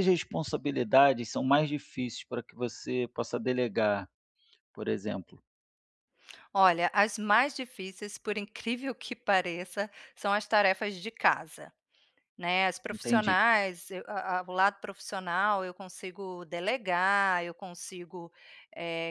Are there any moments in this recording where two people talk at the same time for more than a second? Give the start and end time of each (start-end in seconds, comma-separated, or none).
none